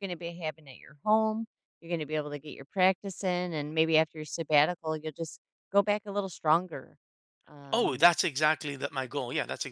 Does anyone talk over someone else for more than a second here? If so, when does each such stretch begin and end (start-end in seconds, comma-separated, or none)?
none